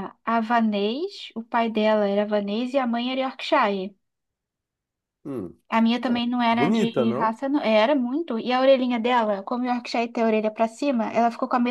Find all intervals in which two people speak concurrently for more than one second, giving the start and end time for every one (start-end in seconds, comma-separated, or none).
6.1-7.4